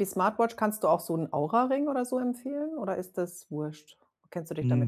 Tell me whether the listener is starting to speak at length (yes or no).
yes